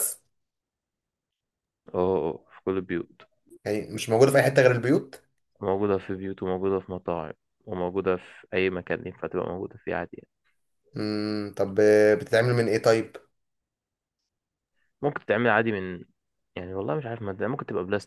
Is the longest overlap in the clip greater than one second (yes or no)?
no